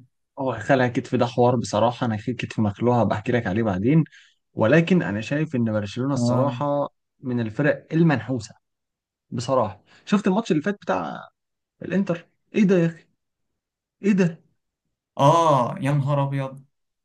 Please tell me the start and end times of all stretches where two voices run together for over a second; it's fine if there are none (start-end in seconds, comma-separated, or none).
none